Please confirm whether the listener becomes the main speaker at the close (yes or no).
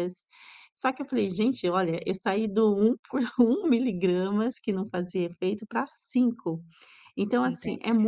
no